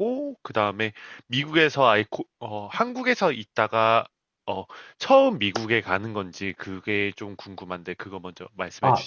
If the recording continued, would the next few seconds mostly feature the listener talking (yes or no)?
yes